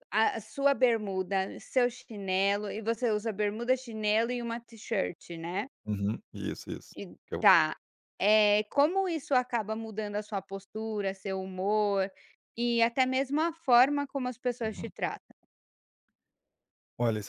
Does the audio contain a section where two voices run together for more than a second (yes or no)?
no